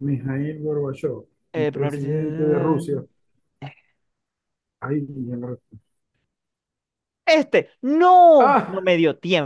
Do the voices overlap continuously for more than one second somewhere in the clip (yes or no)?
yes